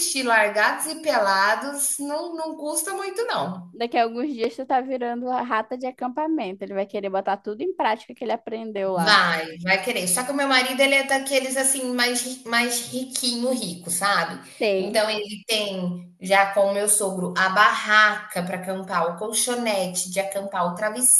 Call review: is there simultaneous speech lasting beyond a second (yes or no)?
no